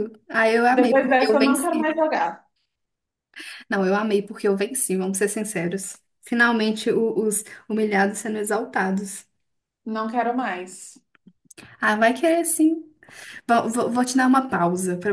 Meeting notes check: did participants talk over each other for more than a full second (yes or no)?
yes